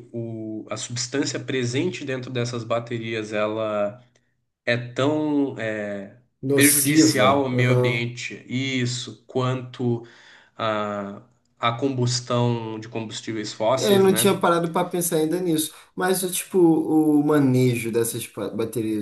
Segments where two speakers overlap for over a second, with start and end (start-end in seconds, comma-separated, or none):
6.5-8.1